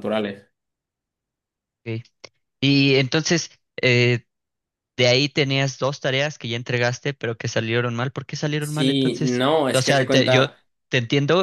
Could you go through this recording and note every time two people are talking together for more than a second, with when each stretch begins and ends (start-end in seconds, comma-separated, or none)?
8.6-10.5